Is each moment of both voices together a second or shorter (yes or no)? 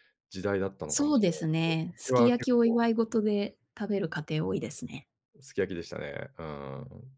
no